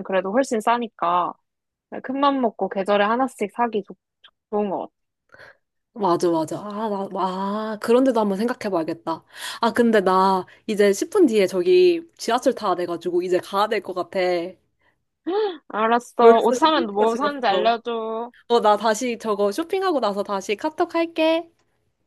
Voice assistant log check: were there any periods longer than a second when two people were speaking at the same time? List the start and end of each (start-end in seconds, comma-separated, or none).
16.2-17.7